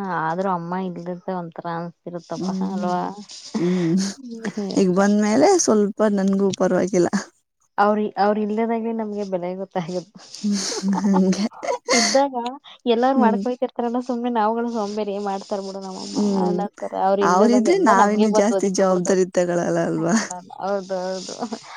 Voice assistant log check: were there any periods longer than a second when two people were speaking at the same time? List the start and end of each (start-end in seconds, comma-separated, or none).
17.3-19.2